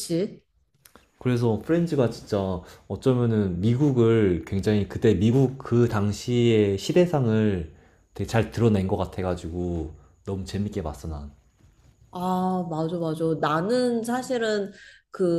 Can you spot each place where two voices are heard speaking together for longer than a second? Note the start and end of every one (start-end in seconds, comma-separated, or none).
none